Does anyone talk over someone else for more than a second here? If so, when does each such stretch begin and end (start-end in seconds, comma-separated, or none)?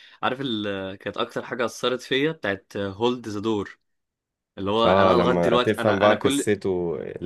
4.8-6.5